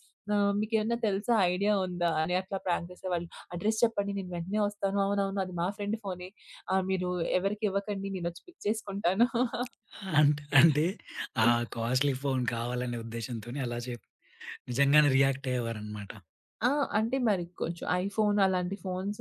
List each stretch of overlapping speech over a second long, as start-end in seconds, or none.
none